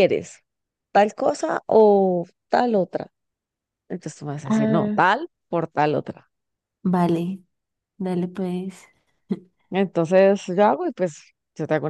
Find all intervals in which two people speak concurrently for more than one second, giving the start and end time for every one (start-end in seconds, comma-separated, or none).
none